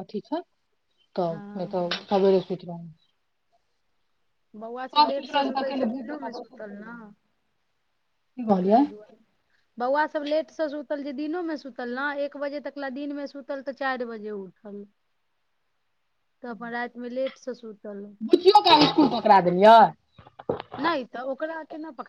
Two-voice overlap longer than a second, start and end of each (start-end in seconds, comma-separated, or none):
5.3-6.9